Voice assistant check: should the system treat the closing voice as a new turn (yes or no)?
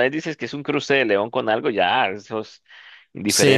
yes